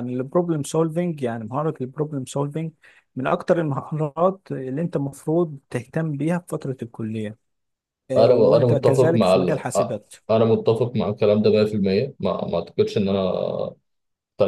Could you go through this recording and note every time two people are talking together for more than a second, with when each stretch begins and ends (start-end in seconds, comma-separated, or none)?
8.2-9.9